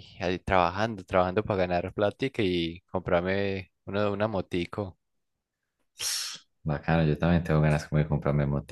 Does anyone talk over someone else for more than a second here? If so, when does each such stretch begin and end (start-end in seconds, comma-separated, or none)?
none